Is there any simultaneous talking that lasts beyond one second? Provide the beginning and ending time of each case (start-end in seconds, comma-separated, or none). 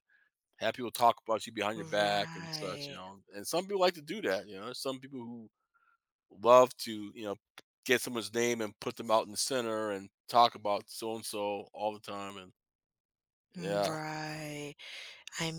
1.8-3.0